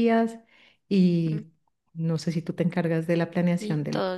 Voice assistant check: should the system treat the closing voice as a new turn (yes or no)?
yes